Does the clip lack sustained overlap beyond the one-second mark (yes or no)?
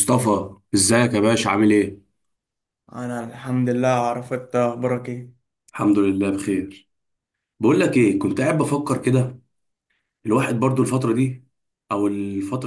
yes